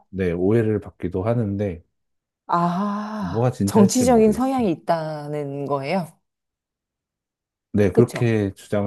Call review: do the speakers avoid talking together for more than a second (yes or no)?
no